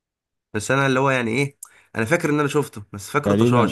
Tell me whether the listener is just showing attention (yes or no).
no